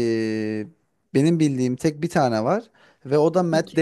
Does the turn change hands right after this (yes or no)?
no